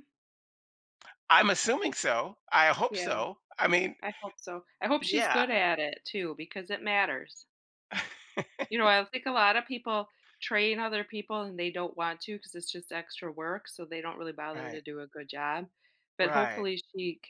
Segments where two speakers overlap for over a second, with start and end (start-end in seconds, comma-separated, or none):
none